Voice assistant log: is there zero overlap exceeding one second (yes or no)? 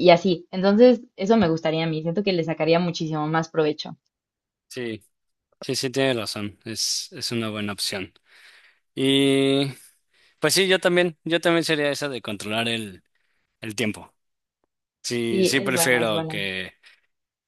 no